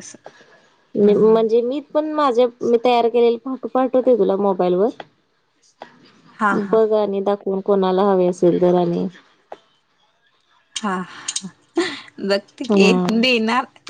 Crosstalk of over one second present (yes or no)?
no